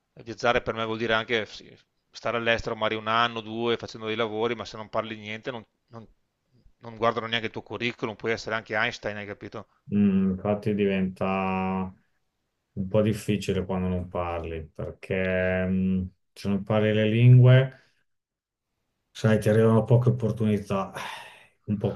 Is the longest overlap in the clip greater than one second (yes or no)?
no